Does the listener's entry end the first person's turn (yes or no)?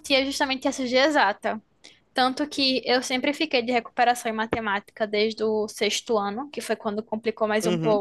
no